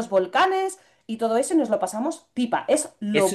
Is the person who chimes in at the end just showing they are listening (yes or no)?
no